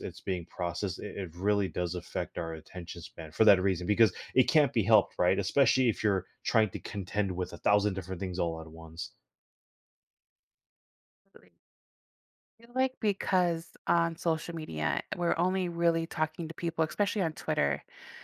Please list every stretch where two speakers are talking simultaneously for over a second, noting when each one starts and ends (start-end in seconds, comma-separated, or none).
none